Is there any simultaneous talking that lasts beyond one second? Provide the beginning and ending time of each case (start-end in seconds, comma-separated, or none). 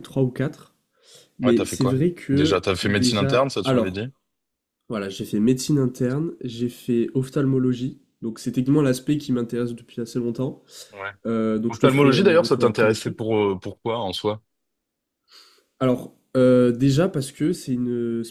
1.4-4.0, 11.7-13.2